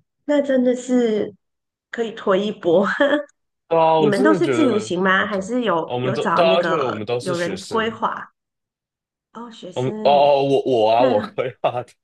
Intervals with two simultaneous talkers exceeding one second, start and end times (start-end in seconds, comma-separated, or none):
4.0-8.0